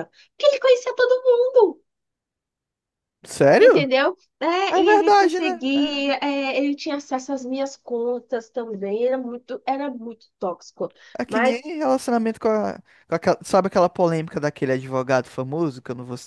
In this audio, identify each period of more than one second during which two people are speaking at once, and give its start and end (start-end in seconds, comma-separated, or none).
4.7-6.1